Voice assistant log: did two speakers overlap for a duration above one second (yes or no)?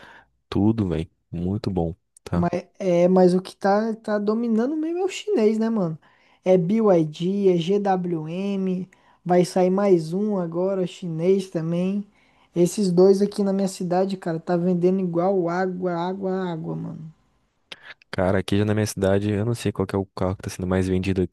no